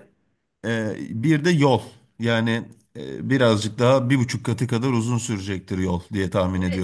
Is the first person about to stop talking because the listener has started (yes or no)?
yes